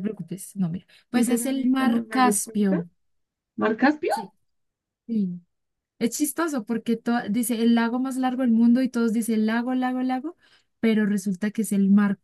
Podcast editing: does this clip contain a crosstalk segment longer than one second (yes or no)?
yes